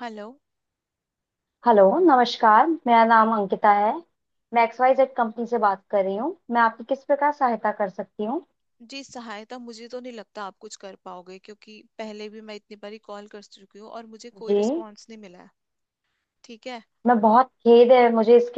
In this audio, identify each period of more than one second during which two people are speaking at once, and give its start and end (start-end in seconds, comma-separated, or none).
none